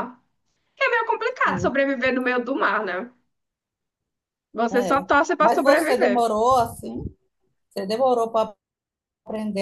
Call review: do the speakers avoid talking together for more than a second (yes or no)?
no